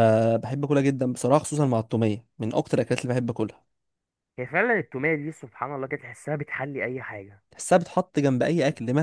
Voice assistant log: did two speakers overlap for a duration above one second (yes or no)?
no